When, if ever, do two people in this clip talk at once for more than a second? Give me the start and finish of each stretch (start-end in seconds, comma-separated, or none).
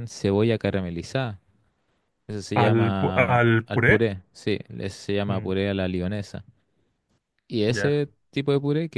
2.5-4.0